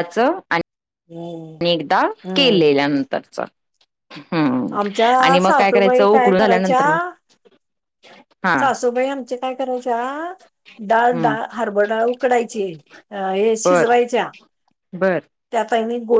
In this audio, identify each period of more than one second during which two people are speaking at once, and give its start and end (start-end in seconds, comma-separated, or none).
5.2-7.0